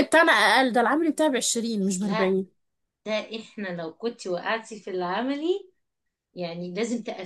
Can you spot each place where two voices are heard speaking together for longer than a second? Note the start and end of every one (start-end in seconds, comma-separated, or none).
none